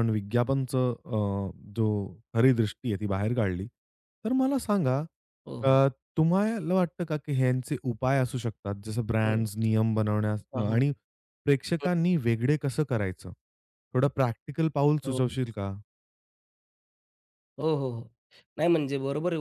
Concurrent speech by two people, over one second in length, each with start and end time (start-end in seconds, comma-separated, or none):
none